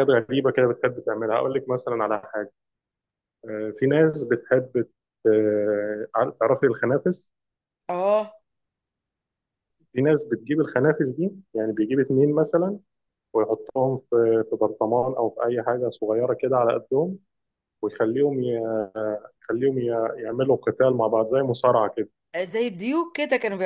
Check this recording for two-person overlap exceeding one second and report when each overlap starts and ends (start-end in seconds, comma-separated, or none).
none